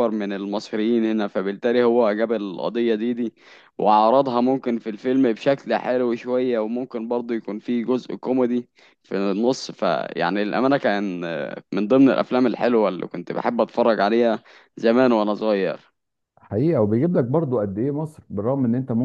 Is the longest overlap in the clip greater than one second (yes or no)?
no